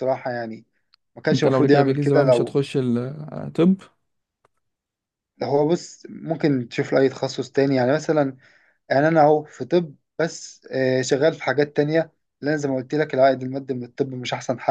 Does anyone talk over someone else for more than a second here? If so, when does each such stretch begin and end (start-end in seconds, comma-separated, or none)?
1.3-2.6